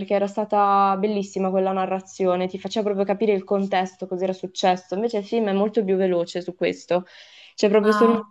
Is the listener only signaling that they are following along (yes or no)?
yes